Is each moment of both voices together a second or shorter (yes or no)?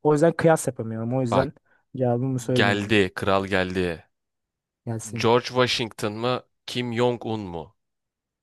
yes